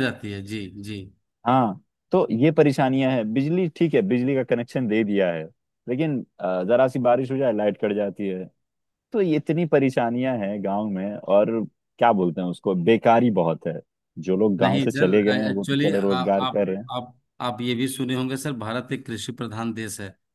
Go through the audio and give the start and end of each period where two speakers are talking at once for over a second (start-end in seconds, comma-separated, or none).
14.6-16.6